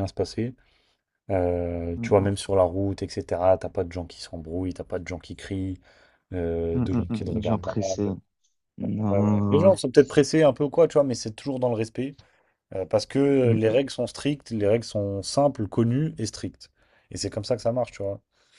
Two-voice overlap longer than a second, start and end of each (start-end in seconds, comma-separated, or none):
6.7-8.1